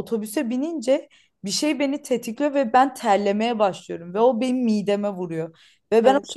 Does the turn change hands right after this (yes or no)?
no